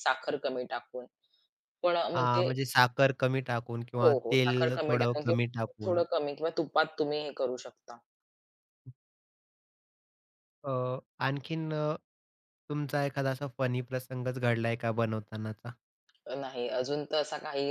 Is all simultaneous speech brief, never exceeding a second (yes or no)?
no